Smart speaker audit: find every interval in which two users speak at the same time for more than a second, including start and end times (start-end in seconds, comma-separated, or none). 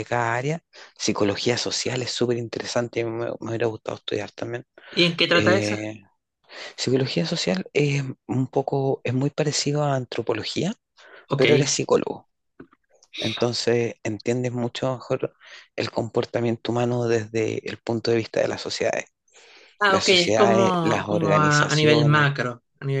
19.9-22.3